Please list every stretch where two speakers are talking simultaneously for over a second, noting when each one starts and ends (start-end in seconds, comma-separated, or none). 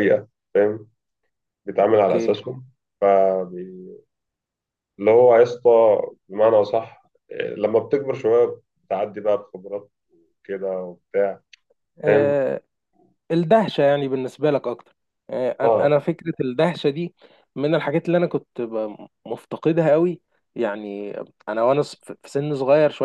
none